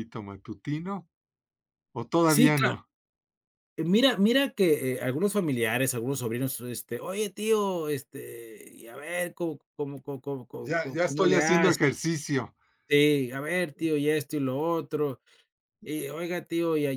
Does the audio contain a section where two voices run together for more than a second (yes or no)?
yes